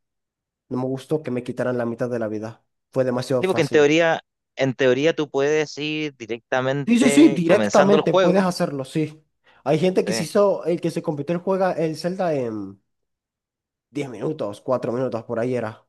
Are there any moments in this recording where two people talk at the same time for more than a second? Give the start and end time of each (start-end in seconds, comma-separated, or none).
6.8-8.5